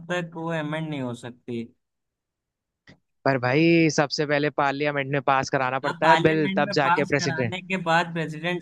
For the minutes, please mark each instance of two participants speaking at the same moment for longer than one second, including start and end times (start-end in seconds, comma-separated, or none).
5.8-7.5